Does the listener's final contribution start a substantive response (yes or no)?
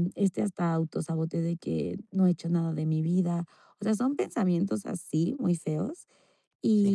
no